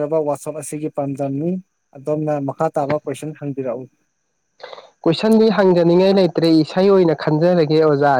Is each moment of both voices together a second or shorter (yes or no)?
yes